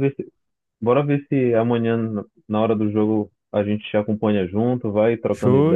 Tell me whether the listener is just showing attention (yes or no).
no